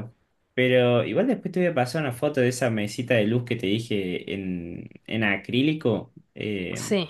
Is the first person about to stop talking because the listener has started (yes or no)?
no